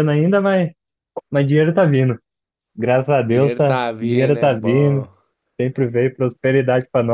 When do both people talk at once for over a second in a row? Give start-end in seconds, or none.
3.3-5.1